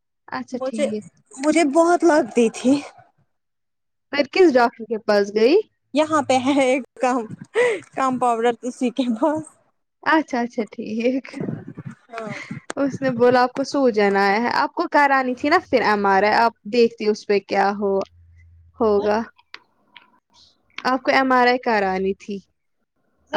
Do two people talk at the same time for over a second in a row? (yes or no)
no